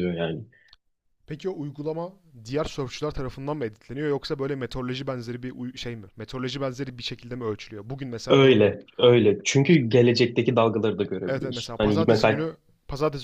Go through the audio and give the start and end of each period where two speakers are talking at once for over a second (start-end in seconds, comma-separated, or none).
11.2-12.5